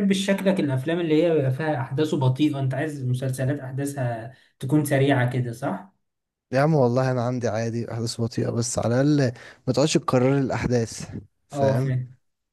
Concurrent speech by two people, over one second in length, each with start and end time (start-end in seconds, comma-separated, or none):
none